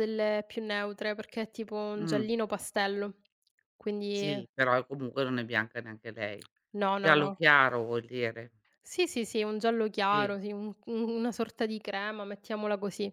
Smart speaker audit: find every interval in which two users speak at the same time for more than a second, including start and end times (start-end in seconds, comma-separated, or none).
none